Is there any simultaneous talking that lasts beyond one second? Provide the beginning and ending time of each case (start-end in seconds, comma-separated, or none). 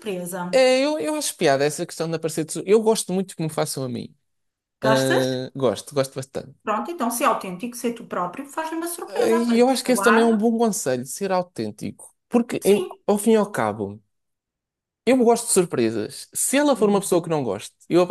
9.1-10.4